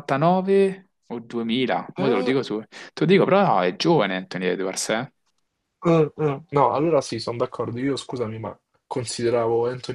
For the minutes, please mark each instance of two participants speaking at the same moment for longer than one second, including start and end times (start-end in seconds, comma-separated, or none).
none